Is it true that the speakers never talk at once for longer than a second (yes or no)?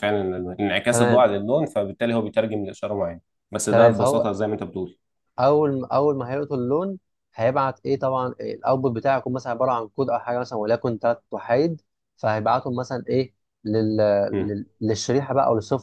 yes